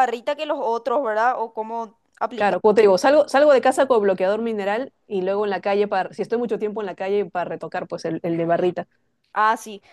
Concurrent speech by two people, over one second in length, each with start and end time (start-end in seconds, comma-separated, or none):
none